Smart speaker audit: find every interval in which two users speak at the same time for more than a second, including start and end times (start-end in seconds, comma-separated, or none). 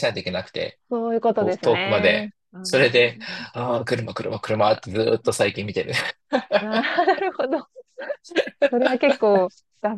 1.6-3.0